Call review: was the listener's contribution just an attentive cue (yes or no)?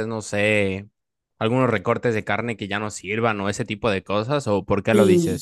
no